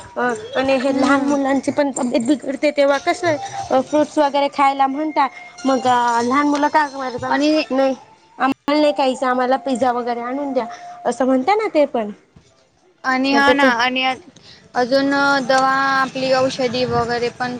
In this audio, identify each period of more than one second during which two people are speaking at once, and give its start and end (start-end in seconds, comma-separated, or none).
none